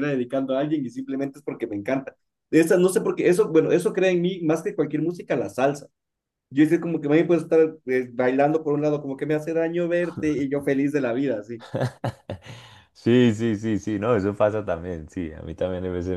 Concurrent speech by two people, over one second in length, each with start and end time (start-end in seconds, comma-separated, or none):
none